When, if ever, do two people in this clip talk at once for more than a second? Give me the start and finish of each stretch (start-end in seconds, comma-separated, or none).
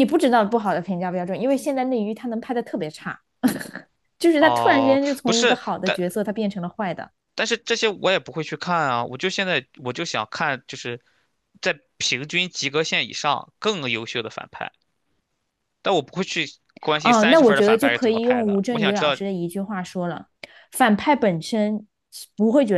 4.4-6.0, 17.0-19.2